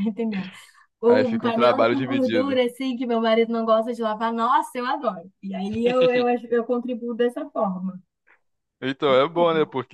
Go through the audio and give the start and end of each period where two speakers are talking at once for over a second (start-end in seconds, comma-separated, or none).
1.1-2.6